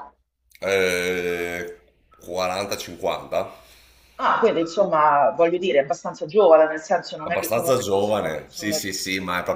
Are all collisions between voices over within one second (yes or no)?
no